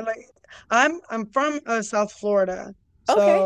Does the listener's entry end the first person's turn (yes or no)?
no